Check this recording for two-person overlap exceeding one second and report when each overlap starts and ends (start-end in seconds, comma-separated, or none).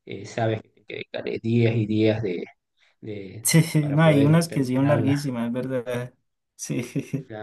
3.4-5.2